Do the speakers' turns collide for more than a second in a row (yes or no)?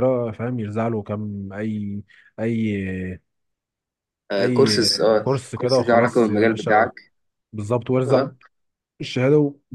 yes